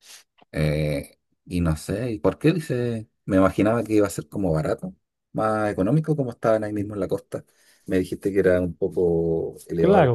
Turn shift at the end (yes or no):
yes